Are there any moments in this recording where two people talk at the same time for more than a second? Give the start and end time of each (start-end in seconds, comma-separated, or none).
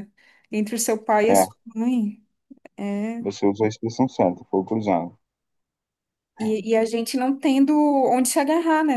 none